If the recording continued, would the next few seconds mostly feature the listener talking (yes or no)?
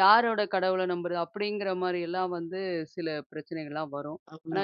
no